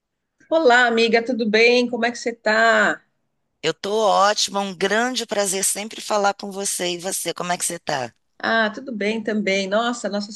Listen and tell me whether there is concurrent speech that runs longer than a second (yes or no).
no